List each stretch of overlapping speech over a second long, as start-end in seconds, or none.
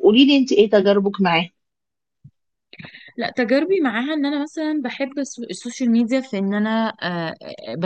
none